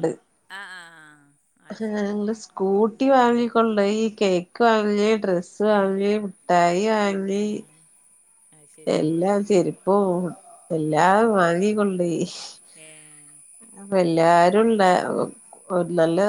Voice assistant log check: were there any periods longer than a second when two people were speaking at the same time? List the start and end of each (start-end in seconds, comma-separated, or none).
none